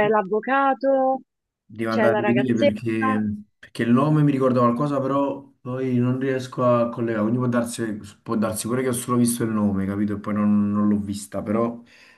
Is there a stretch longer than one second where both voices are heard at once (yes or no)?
yes